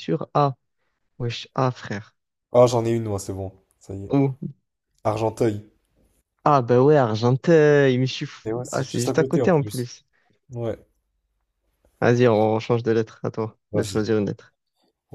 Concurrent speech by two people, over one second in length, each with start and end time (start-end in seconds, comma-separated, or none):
8.4-9.9